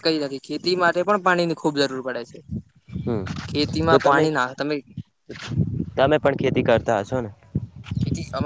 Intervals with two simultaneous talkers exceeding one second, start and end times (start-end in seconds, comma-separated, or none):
none